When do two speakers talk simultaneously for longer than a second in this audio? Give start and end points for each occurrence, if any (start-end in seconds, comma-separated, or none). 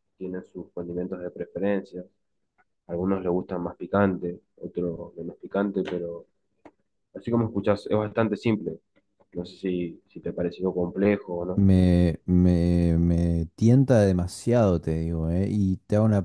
none